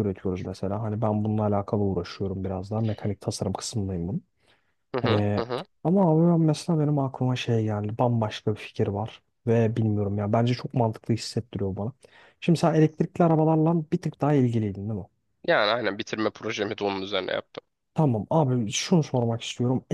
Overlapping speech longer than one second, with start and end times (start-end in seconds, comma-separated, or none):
none